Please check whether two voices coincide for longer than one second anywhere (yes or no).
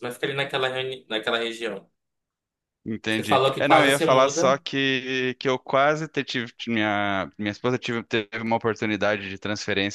yes